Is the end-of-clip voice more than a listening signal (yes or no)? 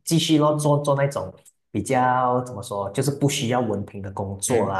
no